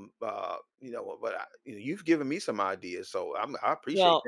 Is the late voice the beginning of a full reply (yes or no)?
yes